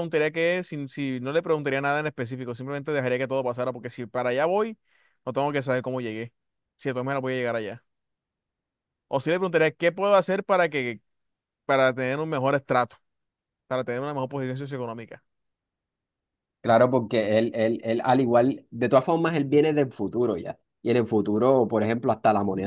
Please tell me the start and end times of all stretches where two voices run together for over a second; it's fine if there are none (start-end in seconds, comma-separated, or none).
none